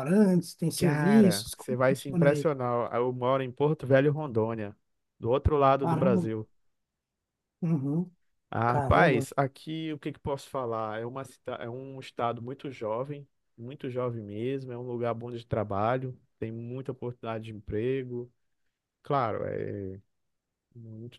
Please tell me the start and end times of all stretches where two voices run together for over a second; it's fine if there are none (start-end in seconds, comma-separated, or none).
0.8-2.5